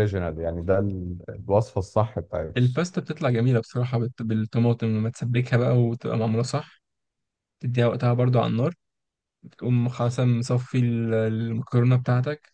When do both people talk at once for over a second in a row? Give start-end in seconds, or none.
none